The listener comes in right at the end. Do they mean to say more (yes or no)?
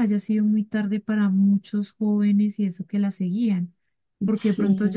no